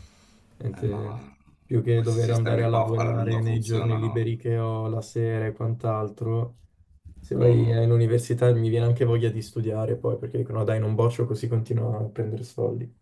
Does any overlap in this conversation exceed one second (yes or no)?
yes